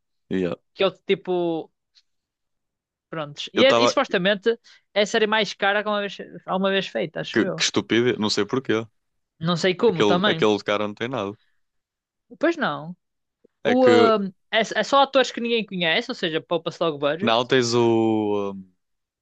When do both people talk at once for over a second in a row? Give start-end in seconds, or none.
none